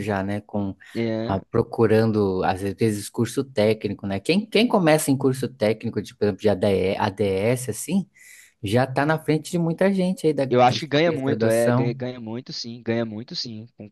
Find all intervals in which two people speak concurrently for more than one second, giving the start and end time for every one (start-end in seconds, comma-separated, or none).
10.5-11.9